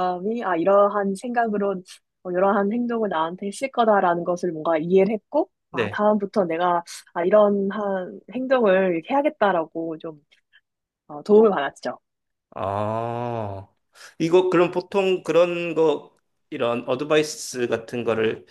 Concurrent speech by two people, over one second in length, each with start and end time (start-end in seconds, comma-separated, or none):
none